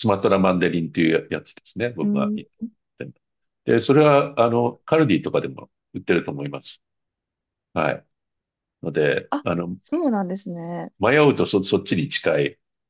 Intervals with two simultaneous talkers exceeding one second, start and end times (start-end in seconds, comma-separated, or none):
none